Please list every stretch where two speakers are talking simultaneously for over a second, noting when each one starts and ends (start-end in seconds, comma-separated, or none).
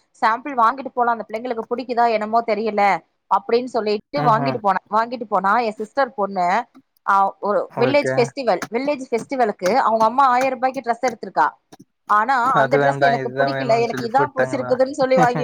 12.6-14.7